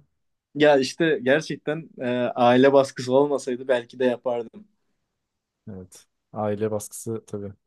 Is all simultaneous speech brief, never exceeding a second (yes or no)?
yes